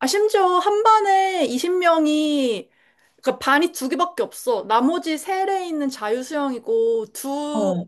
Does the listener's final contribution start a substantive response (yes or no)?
no